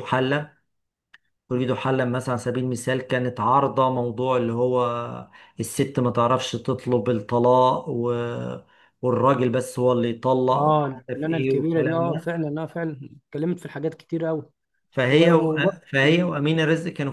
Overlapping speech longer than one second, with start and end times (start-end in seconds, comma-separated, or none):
10.5-12.4